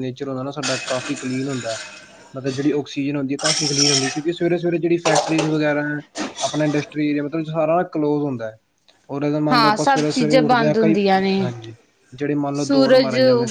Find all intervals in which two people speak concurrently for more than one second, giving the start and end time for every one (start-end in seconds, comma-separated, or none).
9.5-10.9